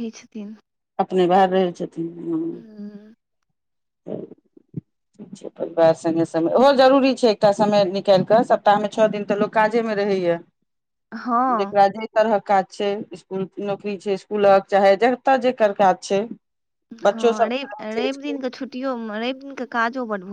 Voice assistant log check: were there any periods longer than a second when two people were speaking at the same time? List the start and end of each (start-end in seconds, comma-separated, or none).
17.0-18.4